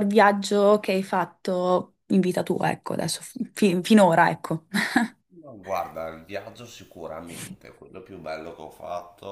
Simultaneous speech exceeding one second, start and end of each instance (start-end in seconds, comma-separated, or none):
none